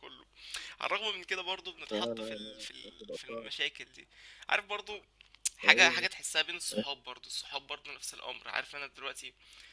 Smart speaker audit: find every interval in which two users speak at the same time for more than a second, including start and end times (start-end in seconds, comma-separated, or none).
1.9-3.5